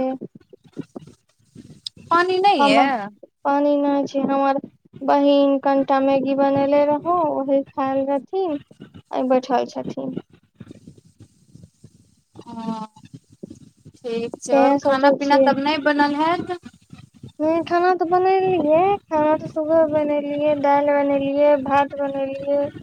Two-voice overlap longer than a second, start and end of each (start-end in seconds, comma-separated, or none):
none